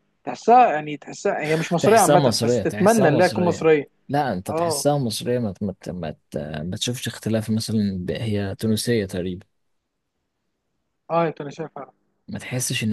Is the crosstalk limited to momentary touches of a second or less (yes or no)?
no